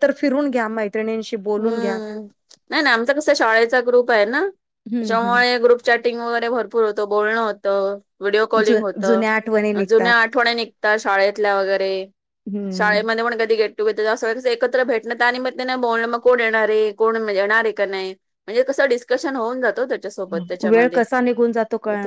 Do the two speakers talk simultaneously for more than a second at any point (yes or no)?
yes